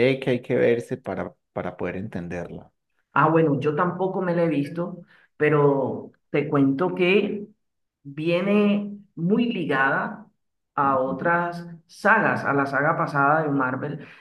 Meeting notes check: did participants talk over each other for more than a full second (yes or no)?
no